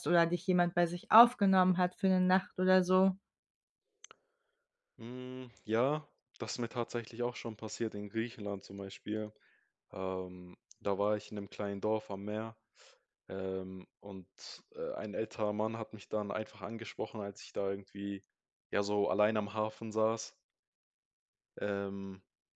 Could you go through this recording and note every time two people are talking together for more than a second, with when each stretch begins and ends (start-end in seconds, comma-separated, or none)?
none